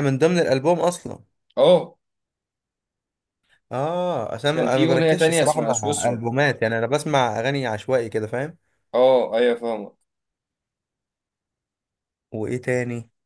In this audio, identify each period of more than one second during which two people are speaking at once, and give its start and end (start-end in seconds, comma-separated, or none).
4.5-6.2